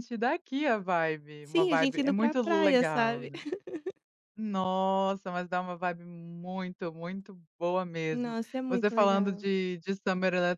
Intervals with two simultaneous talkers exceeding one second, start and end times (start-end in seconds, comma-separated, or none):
1.4-3.3, 8.1-9.5